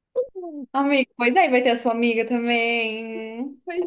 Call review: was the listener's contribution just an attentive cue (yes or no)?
no